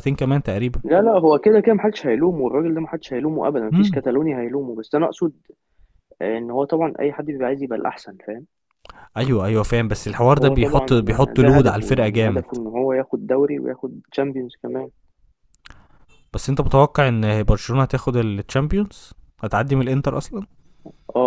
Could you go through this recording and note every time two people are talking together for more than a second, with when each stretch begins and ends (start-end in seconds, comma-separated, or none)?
10.3-12.6